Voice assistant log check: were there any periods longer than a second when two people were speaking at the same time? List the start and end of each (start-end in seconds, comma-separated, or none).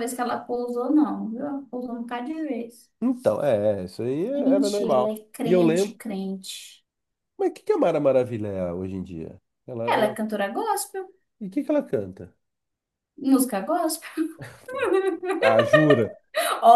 4.3-6.0